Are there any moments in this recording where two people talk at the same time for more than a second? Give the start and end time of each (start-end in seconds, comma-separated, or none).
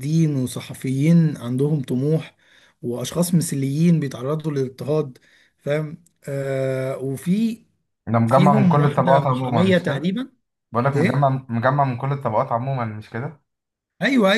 8.2-10.1